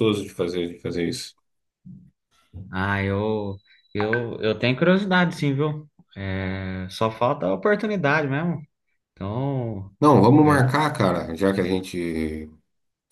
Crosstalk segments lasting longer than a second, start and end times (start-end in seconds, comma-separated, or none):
none